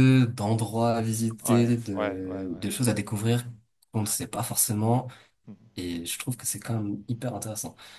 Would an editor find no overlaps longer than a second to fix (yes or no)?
no